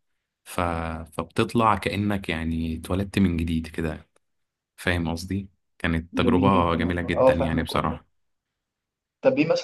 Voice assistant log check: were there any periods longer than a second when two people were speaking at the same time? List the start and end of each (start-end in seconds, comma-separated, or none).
6.1-8.0